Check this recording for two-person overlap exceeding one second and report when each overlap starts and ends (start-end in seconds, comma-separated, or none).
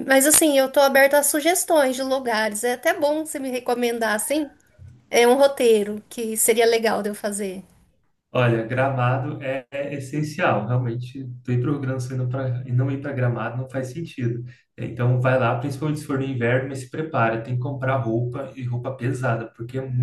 none